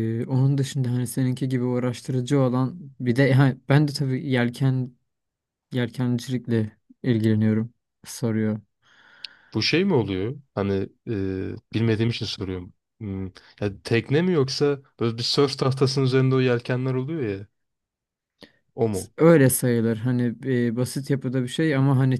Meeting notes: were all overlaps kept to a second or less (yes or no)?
yes